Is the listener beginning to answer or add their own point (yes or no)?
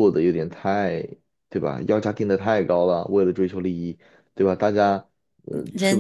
yes